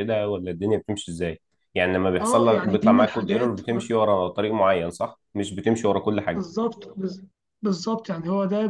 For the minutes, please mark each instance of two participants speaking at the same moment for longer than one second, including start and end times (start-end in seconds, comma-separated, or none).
2.2-3.6